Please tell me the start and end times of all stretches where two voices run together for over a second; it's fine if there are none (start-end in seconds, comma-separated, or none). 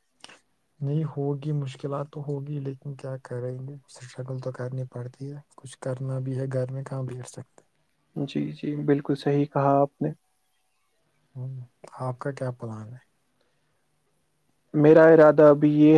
none